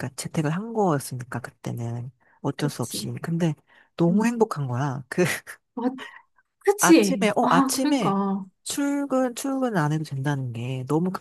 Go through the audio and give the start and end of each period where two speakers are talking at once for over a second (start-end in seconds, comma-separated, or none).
6.8-8.2